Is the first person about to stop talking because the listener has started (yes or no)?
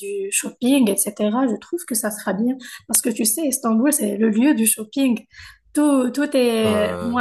no